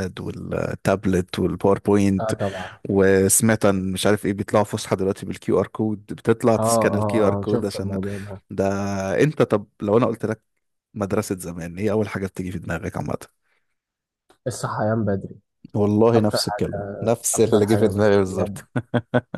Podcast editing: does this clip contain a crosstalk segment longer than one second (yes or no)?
yes